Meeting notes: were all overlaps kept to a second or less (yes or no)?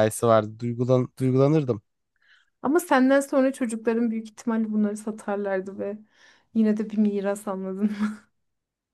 yes